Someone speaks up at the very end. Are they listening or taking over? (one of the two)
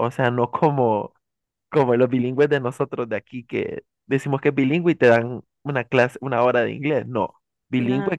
listening